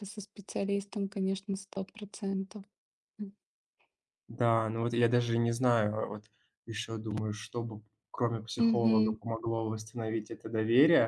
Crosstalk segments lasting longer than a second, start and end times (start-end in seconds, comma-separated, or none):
none